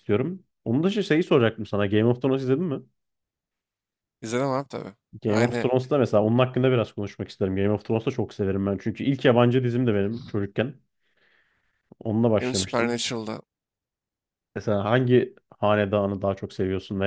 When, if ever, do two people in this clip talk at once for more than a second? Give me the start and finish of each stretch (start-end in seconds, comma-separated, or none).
none